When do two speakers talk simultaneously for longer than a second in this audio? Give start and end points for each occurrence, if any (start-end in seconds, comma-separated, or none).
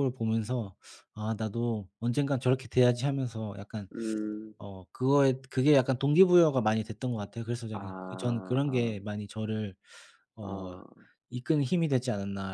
7.7-9.0